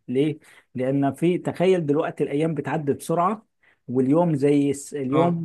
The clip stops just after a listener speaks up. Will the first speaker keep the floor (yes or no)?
yes